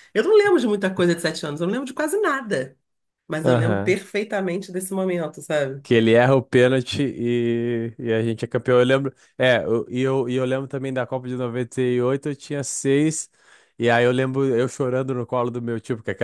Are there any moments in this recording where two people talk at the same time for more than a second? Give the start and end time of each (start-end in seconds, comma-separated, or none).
none